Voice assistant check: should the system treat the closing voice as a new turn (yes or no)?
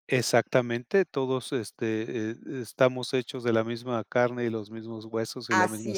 yes